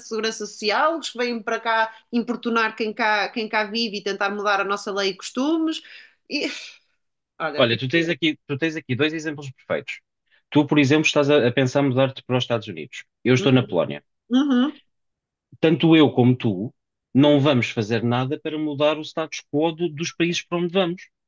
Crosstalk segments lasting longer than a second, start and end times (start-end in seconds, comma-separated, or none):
none